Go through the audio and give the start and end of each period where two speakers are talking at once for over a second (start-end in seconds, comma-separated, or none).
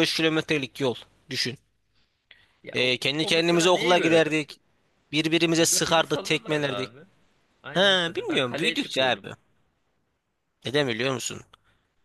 2.7-4.2, 5.5-6.9, 7.7-9.3